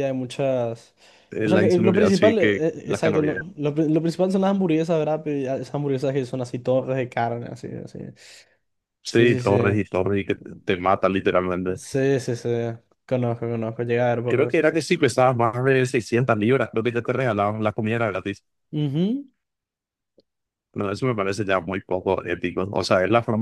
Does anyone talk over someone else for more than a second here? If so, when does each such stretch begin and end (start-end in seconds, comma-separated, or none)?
1.4-3.4